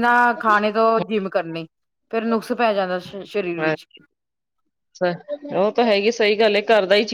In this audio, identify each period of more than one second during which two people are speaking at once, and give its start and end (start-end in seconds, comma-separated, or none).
none